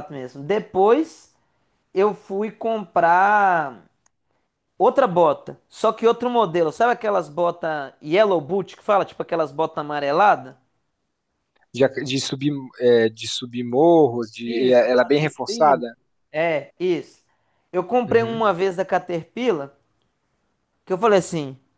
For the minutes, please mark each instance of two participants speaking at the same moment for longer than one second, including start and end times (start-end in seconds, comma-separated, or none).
14.4-15.8